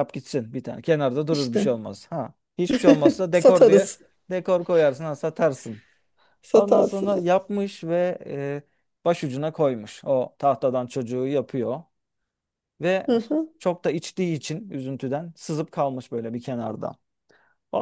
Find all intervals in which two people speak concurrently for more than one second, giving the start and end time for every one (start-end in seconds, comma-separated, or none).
none